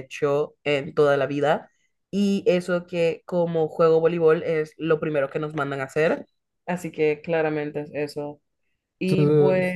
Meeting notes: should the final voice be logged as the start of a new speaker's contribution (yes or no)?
yes